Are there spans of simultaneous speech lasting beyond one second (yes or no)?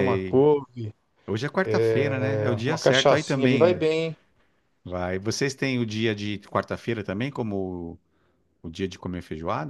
yes